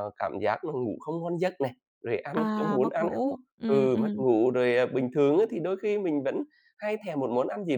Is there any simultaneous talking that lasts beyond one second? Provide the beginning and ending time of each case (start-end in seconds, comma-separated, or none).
2.3-4.2